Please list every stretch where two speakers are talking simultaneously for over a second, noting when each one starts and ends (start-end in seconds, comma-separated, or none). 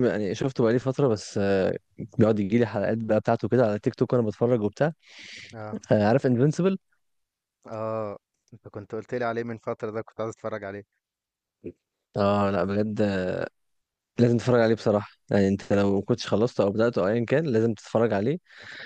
none